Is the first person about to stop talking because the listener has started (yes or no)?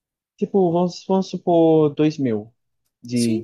yes